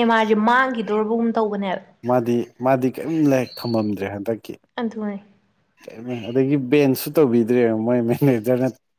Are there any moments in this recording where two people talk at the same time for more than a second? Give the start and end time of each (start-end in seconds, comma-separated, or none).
none